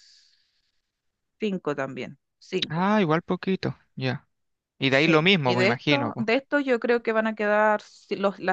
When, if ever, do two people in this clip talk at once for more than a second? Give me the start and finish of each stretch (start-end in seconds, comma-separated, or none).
4.9-6.2